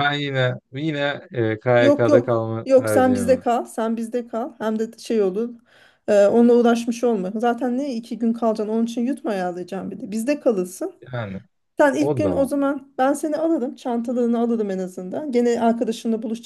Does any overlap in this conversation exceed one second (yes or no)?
yes